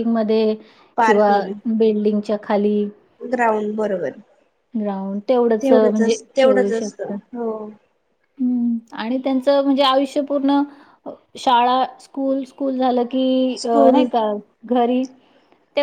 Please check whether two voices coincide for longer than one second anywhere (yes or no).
yes